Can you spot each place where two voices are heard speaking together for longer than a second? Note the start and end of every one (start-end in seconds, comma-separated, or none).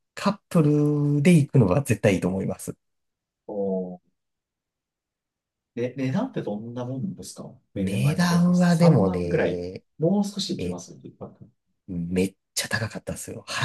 7.8-9.8